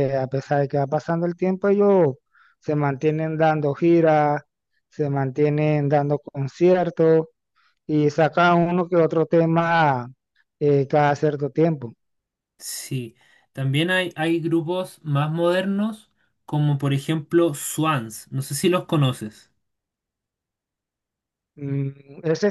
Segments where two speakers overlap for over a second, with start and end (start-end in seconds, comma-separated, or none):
none